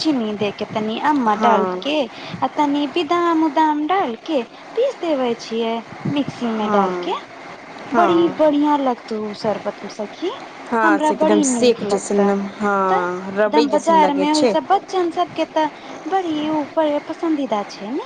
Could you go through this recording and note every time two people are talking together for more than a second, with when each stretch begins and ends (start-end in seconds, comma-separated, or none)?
10.8-12.2